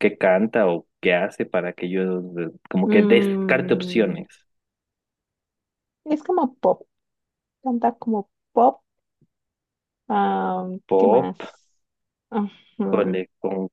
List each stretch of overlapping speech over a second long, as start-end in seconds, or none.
2.9-4.2